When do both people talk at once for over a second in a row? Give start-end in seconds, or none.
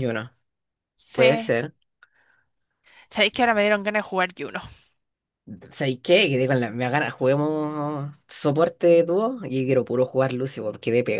none